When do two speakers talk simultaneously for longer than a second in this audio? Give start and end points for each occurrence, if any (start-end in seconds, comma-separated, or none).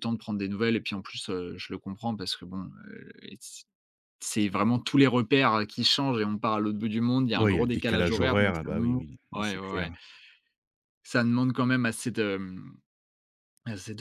7.3-9.9